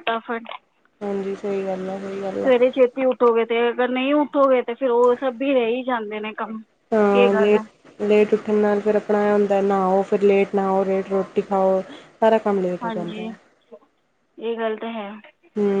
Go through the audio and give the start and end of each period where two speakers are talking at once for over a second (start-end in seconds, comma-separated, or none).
none